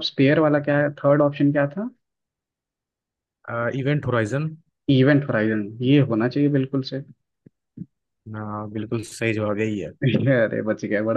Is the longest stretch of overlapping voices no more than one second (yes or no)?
yes